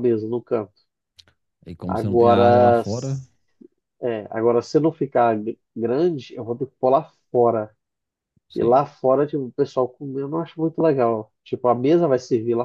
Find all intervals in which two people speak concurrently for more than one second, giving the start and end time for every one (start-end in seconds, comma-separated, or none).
1.9-3.2